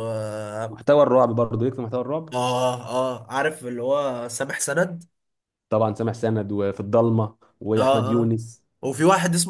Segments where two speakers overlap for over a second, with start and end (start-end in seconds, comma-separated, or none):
none